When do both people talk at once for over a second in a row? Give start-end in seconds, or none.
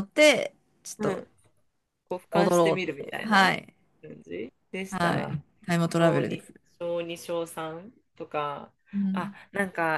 2.3-3.5